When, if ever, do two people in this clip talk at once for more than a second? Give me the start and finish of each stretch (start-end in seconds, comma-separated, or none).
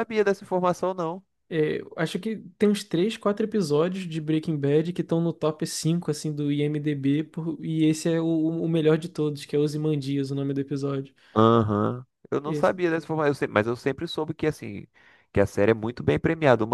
none